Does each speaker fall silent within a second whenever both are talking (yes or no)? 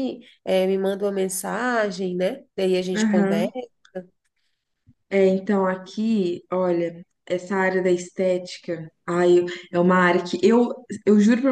yes